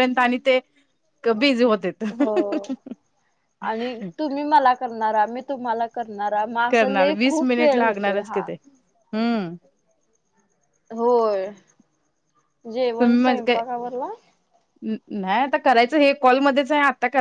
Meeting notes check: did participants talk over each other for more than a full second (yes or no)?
no